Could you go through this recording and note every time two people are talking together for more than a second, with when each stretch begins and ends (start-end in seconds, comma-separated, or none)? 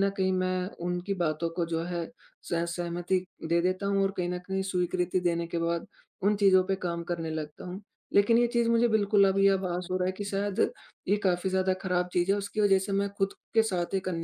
8.9-10.4